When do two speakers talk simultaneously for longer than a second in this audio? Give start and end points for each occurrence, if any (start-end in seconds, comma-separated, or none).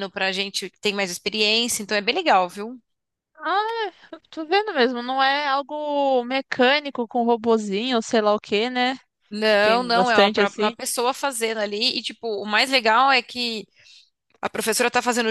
9.4-10.8